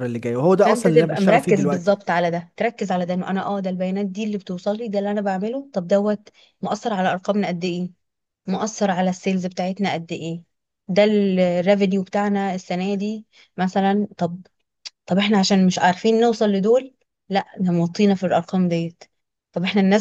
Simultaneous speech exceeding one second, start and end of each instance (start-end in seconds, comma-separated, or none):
0.6-1.9